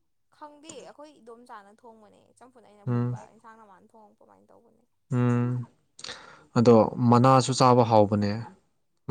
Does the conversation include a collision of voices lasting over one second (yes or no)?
no